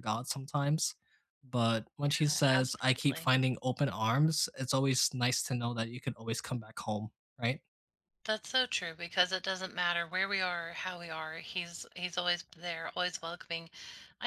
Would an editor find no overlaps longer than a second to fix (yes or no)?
no